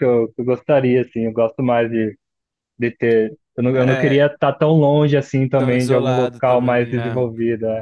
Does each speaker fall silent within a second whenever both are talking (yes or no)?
no